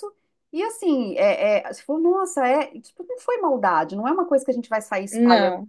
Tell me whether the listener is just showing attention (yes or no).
yes